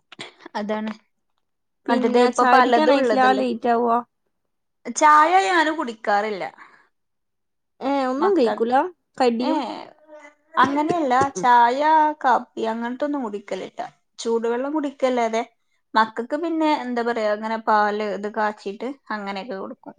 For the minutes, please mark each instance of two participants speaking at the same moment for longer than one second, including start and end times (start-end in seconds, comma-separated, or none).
1.9-3.4